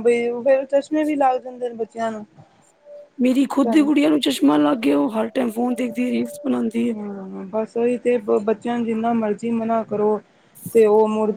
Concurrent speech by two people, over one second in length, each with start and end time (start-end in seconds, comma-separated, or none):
none